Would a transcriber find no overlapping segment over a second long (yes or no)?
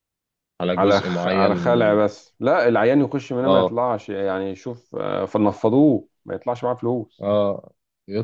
no